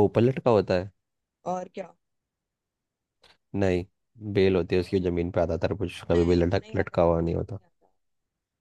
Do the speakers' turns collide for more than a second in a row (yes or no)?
yes